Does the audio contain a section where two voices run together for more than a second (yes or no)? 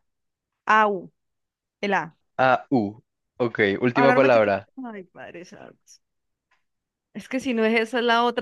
no